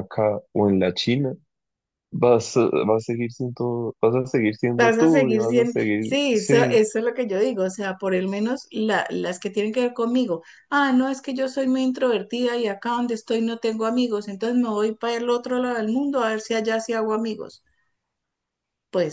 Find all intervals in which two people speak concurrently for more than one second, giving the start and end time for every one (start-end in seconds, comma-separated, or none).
4.8-6.8